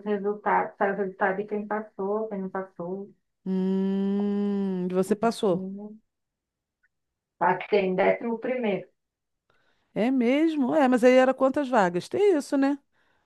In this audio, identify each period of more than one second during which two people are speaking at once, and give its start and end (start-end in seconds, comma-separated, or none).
none